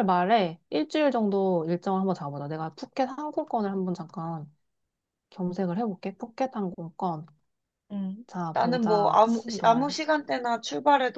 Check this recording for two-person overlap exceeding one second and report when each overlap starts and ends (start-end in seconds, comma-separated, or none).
8.3-10.0